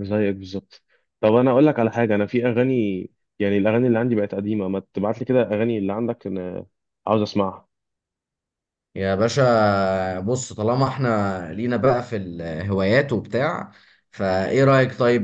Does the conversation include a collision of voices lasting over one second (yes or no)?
no